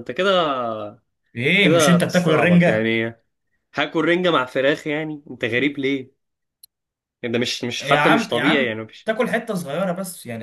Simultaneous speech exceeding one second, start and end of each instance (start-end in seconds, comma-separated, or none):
1.6-3.0, 7.8-9.1